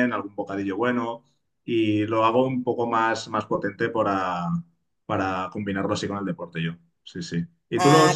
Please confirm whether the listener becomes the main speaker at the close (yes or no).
no